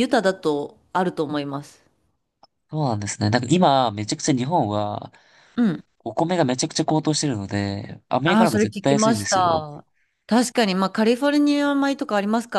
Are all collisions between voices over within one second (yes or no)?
no